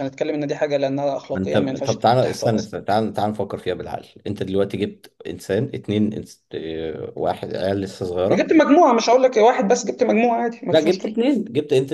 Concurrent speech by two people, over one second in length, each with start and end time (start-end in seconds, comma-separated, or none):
1.3-2.7